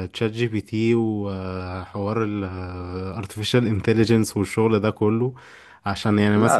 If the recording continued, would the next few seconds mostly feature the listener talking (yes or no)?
no